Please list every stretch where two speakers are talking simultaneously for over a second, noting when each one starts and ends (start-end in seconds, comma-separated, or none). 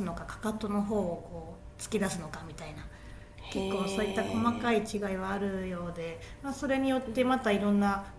3.5-5.0